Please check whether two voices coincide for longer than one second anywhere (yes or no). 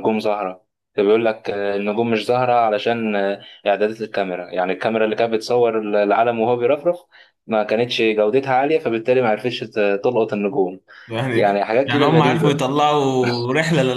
yes